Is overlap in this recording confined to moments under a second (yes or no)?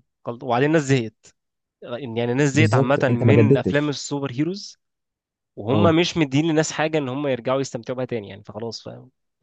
no